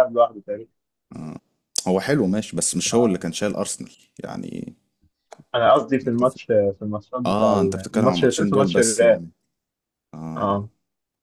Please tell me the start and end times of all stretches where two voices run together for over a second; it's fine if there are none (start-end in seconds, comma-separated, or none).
7.3-9.2